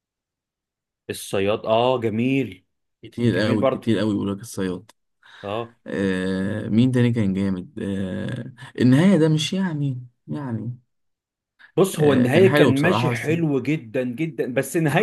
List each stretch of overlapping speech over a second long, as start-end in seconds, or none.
12.0-13.3